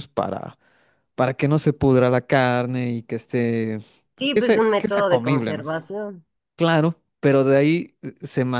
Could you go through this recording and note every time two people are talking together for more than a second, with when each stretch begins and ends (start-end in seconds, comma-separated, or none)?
4.3-5.7